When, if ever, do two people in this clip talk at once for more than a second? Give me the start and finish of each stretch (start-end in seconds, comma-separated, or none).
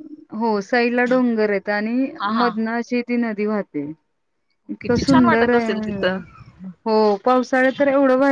4.8-6.2